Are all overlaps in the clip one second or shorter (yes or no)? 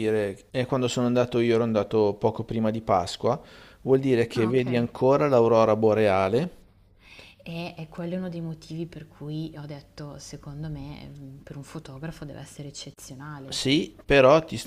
yes